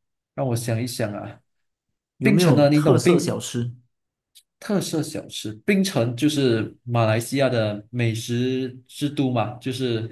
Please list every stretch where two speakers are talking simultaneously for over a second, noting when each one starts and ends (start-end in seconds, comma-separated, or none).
2.2-3.4